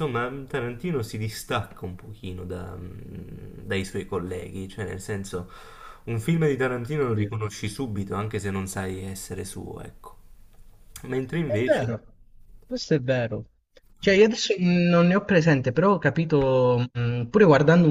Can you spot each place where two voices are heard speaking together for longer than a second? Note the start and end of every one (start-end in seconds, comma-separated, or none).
none